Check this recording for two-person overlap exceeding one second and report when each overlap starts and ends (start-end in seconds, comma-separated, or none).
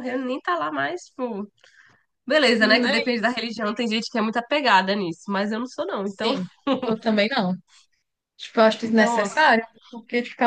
none